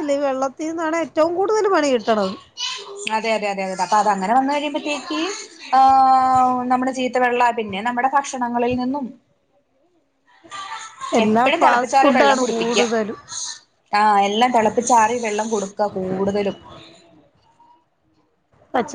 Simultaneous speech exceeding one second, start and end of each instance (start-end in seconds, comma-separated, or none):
11.2-12.8